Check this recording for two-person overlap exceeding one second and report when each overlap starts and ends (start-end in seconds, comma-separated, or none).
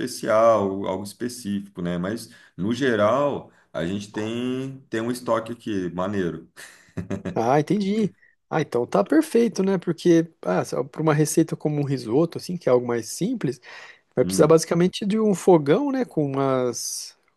none